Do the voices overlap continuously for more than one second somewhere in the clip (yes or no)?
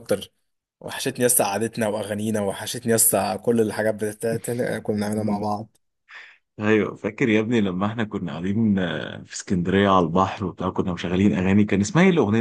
no